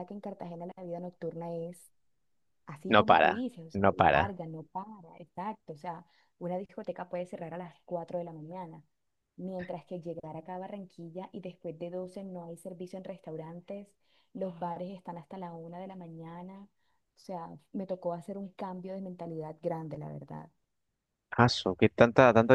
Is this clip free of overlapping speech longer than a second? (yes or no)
no